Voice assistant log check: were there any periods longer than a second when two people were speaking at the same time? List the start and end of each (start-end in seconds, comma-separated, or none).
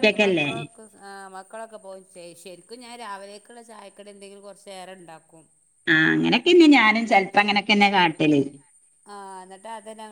none